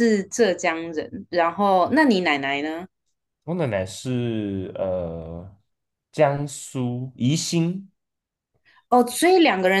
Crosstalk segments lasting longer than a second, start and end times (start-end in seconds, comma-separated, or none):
none